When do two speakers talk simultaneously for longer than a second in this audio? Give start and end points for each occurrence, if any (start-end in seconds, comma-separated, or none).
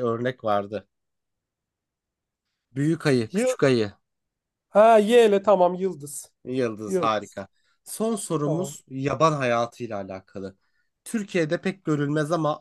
none